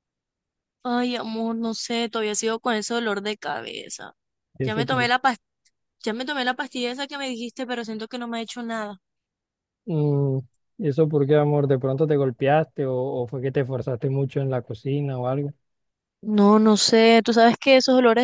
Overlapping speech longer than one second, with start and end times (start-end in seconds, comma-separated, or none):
none